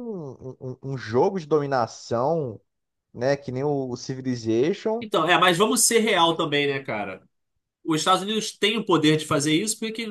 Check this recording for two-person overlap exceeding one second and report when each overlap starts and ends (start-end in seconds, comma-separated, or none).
none